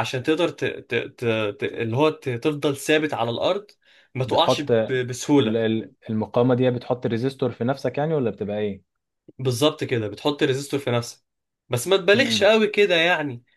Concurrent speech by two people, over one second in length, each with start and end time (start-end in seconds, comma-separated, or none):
4.3-5.6